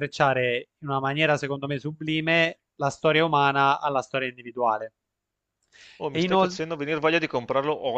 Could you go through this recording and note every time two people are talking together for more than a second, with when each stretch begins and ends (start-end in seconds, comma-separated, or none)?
none